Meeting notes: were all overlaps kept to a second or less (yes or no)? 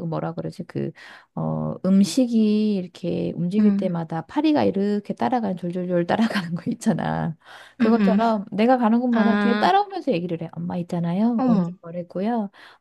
yes